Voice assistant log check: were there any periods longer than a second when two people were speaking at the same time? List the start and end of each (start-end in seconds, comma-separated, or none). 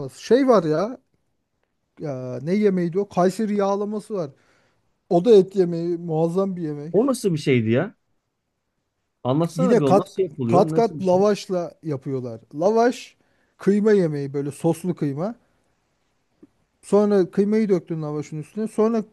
9.6-11.2